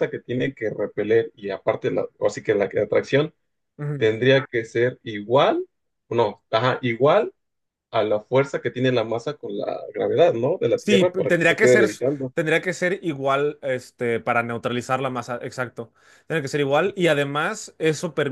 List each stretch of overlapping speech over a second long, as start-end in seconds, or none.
10.7-12.3